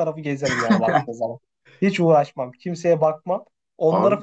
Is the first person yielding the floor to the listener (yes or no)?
no